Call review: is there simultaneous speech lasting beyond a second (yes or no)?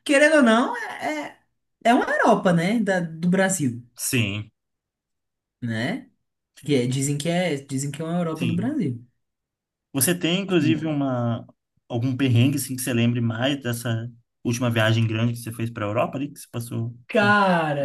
no